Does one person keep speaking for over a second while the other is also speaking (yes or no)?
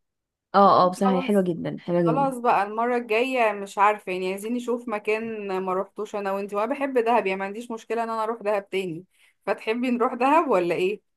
no